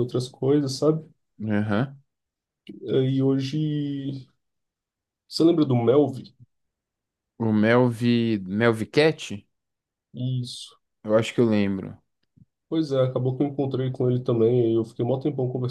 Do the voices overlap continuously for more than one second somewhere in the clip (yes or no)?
no